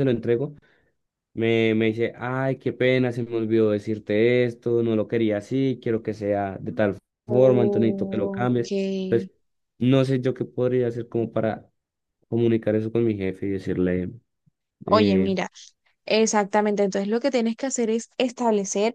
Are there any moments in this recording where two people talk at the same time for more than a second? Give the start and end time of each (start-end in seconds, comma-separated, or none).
7.2-8.7